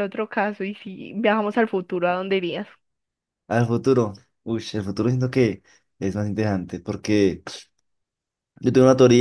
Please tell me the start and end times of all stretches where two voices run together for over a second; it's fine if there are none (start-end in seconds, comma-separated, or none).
none